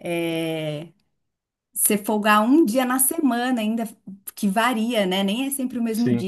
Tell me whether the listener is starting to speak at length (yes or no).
no